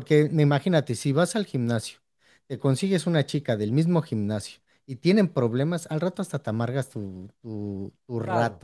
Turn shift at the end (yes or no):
yes